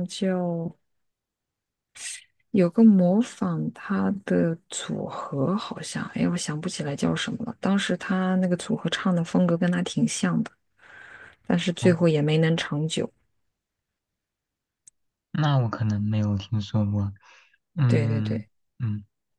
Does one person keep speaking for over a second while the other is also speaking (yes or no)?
no